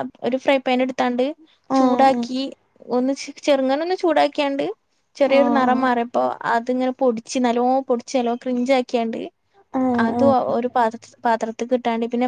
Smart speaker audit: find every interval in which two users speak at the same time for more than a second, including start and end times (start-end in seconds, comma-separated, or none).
none